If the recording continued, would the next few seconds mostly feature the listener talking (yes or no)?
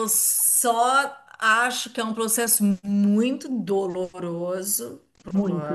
no